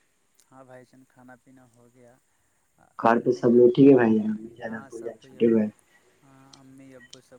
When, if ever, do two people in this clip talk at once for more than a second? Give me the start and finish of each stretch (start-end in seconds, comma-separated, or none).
3.1-5.5